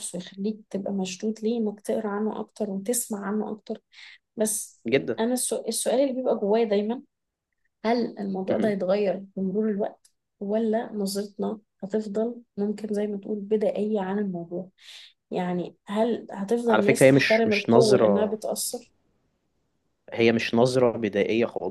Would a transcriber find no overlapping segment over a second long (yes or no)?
no